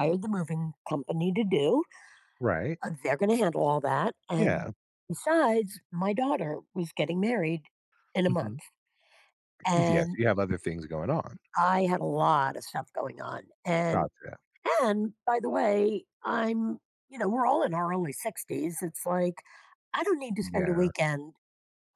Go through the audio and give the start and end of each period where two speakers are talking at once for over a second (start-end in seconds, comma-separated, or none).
none